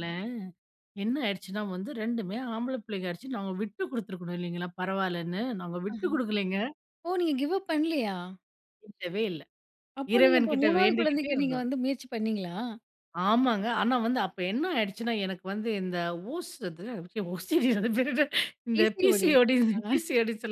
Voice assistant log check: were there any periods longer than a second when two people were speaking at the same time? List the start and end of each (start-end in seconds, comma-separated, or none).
10.1-11.7